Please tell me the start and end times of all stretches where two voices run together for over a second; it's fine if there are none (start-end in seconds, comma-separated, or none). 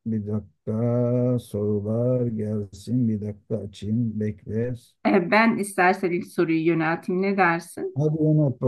none